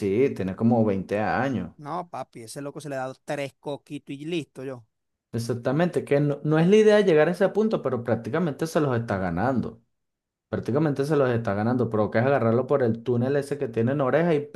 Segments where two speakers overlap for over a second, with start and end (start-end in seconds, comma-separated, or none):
none